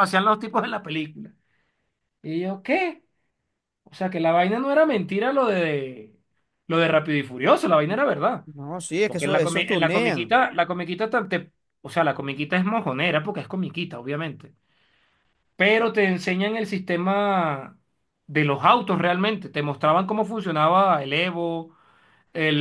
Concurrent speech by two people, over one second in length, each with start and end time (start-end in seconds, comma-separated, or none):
9.1-10.4